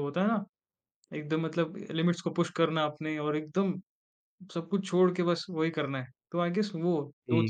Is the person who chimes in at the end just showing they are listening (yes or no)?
yes